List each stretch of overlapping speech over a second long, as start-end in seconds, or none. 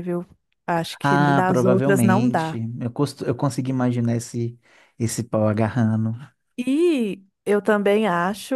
1.0-2.6